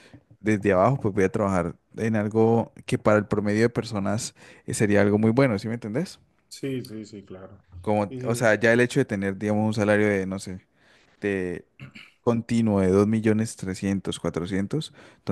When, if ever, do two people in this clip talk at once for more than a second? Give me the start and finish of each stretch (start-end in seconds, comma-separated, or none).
none